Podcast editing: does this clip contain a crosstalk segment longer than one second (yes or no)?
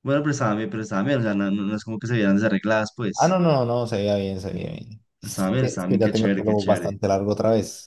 yes